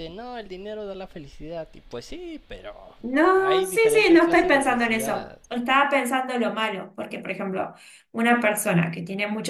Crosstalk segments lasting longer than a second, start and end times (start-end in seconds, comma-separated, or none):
3.4-5.4